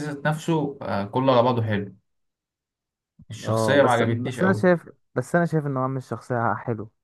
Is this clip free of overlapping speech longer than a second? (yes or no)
no